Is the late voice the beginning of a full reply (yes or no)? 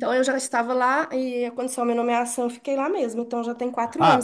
yes